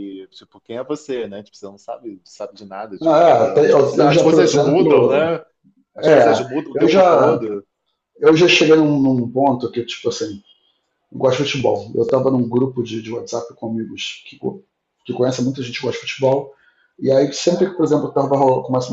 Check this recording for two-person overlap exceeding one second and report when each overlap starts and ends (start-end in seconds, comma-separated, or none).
3.0-5.3, 6.0-7.5